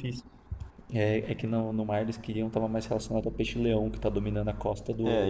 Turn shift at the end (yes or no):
yes